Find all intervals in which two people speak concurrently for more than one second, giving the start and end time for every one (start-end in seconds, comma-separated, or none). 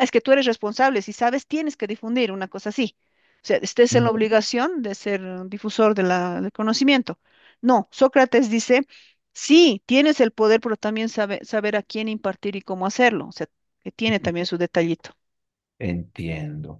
none